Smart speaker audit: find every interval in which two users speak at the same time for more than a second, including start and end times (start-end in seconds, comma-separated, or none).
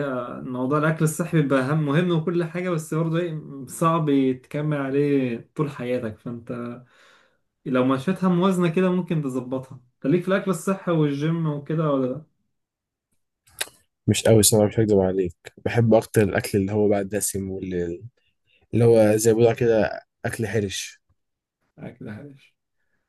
none